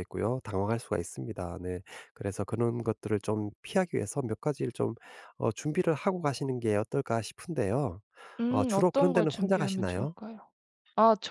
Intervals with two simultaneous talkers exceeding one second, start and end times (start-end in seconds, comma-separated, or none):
8.5-10.2